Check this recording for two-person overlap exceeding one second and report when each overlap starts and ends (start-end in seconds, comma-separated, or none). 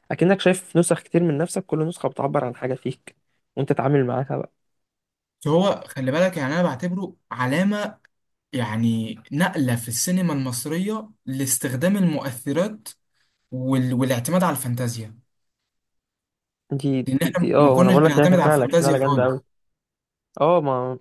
17.1-19.4